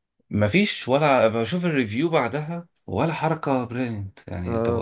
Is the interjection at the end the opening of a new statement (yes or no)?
yes